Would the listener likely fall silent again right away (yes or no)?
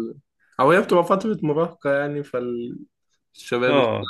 yes